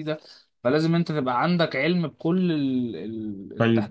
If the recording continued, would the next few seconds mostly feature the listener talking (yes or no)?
yes